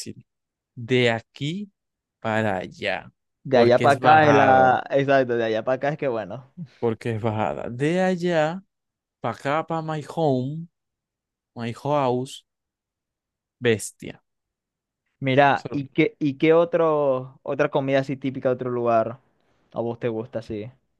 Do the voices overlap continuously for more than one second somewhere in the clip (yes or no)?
yes